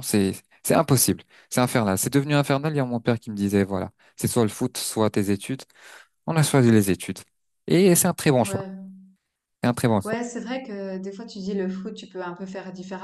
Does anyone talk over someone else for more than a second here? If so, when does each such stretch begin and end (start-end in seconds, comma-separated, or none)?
none